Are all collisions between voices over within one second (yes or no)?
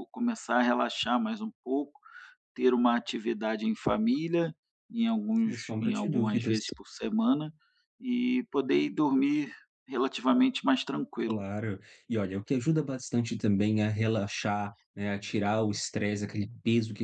no